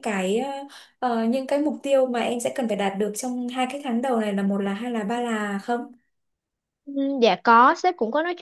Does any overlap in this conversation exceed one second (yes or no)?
no